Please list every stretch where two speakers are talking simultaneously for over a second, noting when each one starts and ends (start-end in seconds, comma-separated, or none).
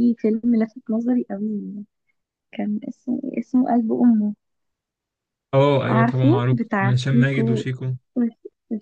5.9-7.7